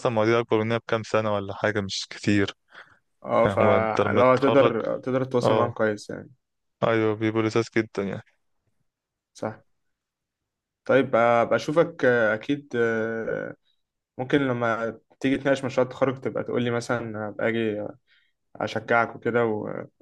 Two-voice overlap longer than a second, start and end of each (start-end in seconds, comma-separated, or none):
3.4-4.7